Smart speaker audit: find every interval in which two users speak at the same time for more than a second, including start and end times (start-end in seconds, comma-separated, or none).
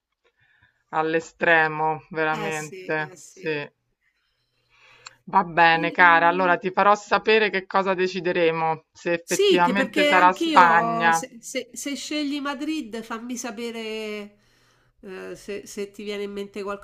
2.3-3.7, 9.2-11.2